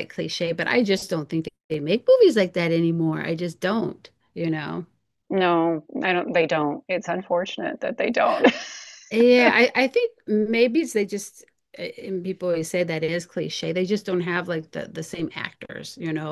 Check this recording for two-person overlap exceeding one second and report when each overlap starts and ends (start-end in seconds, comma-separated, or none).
none